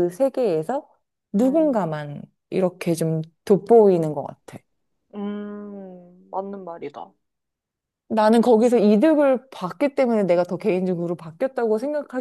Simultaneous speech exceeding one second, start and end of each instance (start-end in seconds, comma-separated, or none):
none